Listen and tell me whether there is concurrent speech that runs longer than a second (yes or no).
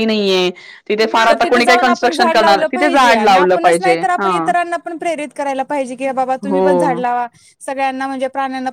yes